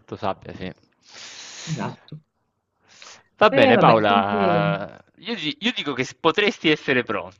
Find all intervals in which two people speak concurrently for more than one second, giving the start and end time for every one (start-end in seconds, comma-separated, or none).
3.5-4.9